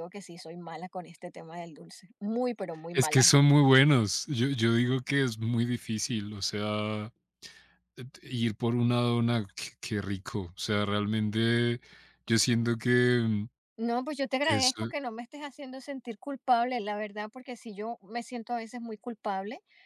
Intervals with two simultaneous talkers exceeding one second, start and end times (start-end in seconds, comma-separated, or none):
none